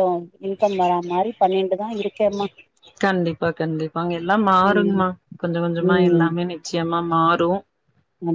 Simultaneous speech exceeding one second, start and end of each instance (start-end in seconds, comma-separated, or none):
none